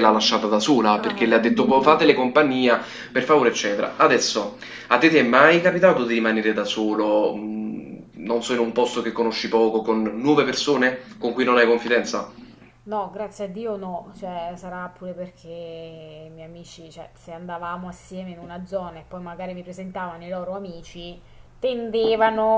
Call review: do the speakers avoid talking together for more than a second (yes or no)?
yes